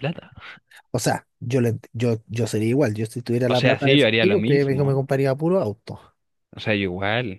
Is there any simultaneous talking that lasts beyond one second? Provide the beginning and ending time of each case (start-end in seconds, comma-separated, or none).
3.5-5.0